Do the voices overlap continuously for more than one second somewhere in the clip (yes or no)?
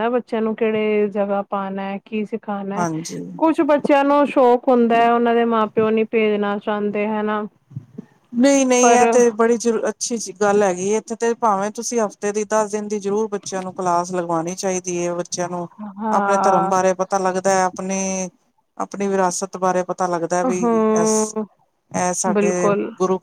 no